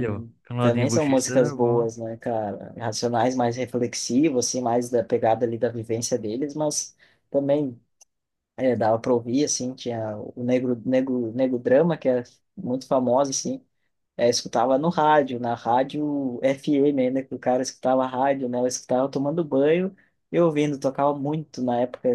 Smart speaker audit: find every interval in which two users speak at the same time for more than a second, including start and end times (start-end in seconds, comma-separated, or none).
0.6-1.9